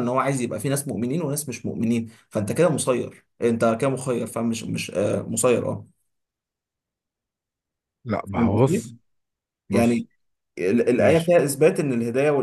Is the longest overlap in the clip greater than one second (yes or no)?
no